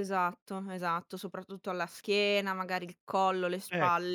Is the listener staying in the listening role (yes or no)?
yes